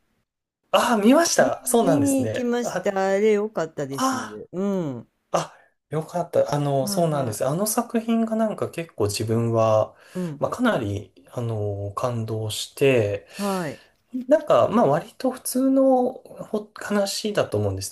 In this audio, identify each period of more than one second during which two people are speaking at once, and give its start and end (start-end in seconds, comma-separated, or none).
1.4-2.9